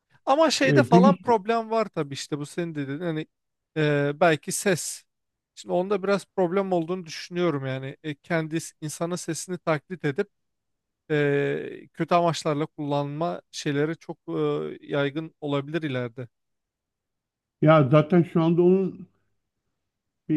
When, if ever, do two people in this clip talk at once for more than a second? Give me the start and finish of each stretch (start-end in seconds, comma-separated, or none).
none